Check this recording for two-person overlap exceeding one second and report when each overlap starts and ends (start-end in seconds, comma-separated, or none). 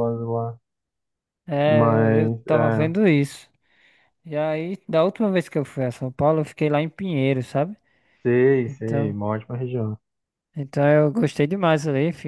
1.6-2.9